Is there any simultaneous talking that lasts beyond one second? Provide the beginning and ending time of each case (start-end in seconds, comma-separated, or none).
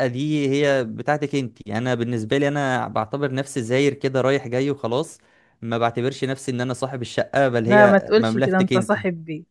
7.7-8.9